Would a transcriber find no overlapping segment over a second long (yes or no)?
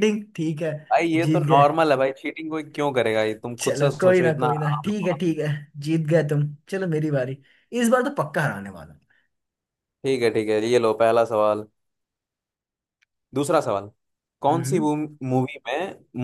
no